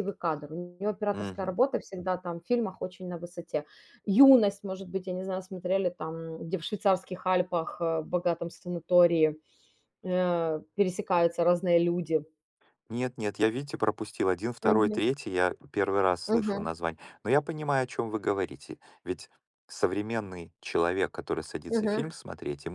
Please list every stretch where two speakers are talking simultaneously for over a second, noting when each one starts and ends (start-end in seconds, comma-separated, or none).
none